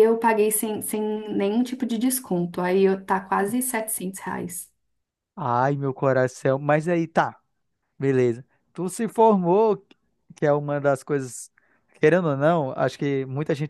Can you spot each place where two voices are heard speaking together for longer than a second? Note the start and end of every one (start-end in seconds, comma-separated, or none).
none